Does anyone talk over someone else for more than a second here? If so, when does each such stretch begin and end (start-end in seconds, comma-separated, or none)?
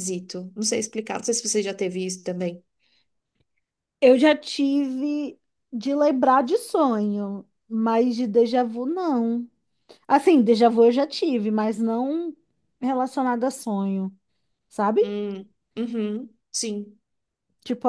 none